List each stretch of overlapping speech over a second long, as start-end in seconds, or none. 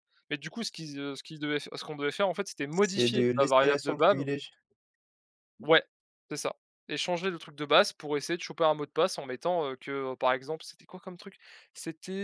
2.7-4.2